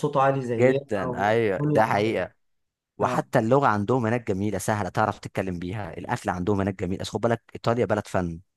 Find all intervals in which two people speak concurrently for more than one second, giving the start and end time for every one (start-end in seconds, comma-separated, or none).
0.6-2.2